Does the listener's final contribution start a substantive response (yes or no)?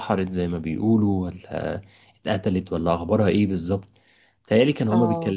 no